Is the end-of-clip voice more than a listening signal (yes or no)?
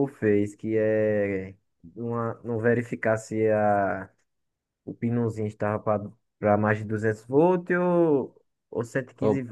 no